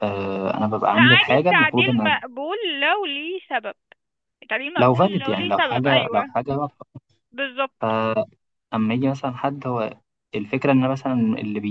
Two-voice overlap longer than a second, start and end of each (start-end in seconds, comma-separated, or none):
0.9-2.2, 4.8-6.4